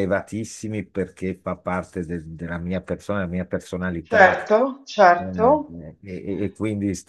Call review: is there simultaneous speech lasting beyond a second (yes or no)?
no